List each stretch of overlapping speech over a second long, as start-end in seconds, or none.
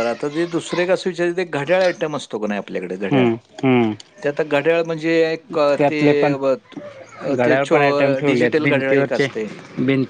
7.3-9.3